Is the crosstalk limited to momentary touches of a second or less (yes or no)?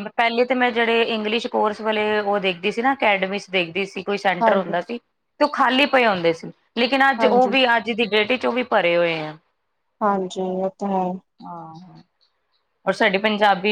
yes